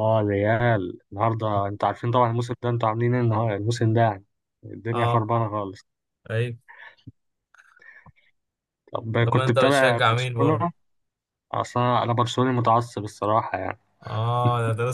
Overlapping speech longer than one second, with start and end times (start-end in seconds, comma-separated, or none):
9.2-10.7